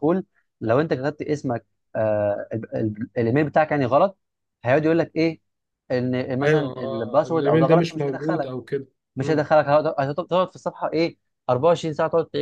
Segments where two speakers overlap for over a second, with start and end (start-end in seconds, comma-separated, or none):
6.4-8.5